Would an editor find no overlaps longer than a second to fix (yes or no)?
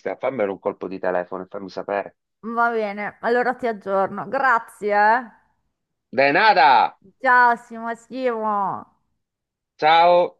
yes